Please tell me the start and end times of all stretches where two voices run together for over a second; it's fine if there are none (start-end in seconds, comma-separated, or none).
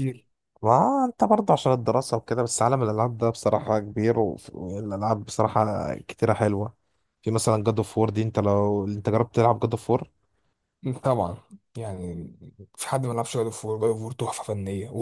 none